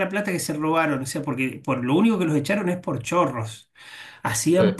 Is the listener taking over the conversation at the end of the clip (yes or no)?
no